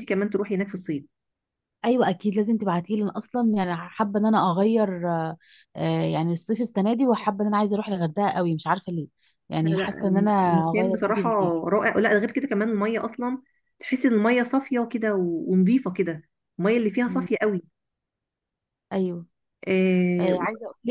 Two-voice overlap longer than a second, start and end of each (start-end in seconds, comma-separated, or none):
9.6-11.3